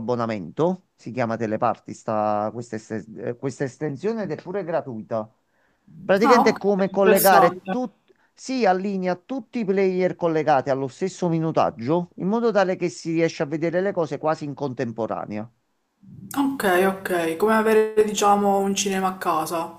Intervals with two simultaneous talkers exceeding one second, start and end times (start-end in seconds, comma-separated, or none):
6.2-7.8